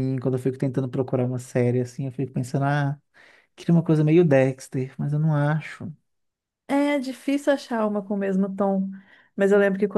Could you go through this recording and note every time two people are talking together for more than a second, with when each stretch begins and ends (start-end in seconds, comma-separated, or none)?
none